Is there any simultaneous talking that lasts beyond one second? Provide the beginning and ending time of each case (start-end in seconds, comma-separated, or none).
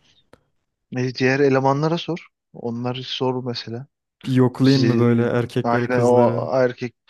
4.6-6.5